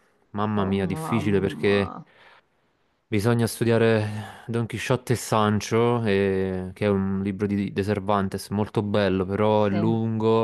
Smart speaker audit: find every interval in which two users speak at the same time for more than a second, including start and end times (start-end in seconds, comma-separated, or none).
0.6-1.9